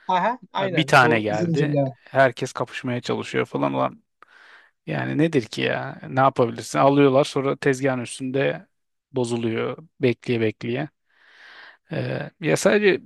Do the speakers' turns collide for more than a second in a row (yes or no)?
yes